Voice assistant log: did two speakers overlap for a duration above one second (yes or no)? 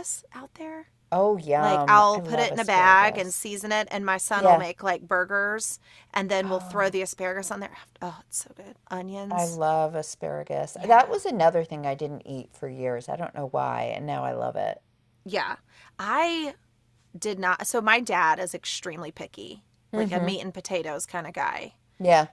yes